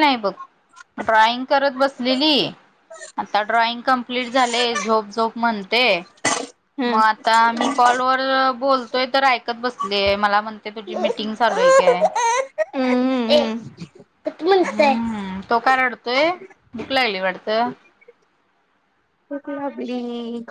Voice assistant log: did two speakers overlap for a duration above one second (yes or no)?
no